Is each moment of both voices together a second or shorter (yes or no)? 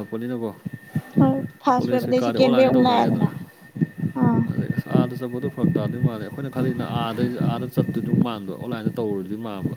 no